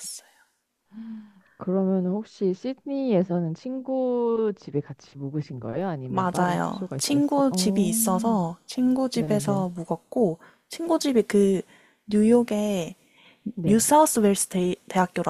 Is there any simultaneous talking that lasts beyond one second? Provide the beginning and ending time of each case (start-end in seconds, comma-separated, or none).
6.1-8.4